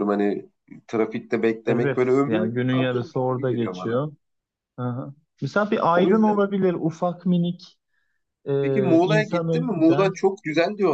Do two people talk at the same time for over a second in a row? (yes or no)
yes